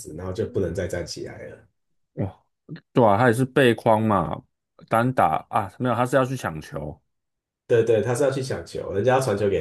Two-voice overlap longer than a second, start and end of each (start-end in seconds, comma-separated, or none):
none